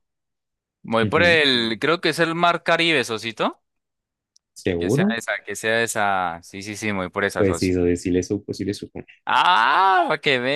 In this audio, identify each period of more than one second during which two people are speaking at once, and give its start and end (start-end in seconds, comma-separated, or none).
none